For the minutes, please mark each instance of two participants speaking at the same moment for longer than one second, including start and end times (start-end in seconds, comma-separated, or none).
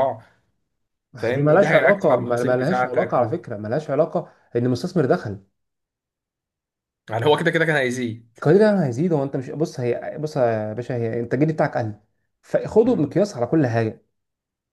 1.2-3.3